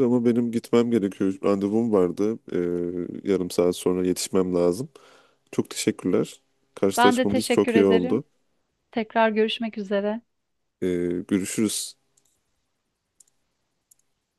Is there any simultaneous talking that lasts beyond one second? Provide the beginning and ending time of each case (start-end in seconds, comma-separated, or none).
7.0-8.2